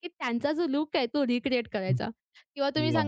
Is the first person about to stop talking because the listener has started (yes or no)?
no